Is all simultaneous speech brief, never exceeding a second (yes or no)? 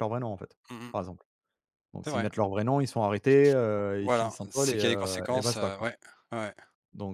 no